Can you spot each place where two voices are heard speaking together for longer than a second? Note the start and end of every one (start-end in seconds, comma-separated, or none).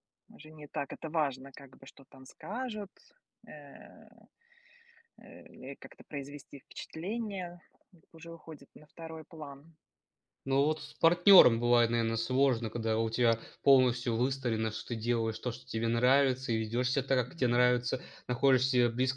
none